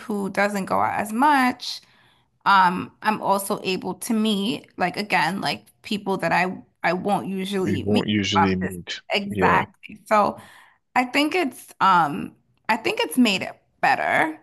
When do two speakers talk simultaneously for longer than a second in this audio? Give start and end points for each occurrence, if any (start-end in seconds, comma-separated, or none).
7.6-9.6